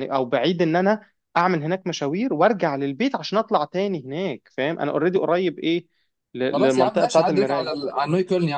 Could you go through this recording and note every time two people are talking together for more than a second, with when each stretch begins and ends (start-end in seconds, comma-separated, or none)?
6.5-7.8